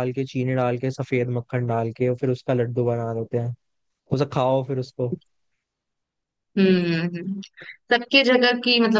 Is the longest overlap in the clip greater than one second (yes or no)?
no